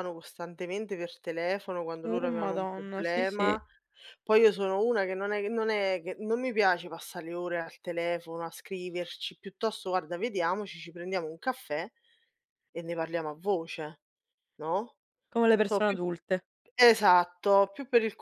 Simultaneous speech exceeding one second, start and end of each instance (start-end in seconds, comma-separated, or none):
2.0-3.6